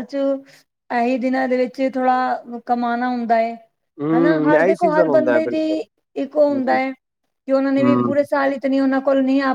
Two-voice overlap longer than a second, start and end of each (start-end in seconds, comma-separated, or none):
4.1-5.6